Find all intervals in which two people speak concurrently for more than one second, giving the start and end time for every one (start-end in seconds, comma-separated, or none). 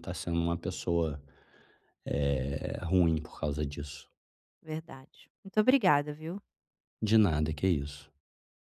none